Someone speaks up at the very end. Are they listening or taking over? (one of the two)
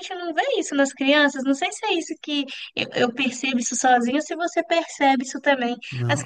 listening